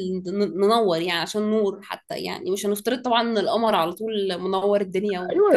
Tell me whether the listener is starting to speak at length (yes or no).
yes